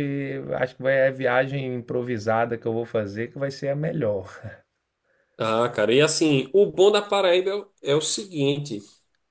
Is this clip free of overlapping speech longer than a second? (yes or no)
yes